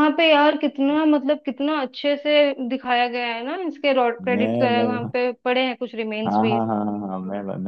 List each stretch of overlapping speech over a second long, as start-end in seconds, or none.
none